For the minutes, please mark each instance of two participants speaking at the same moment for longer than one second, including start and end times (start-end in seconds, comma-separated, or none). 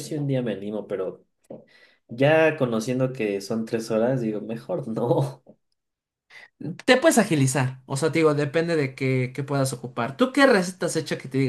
none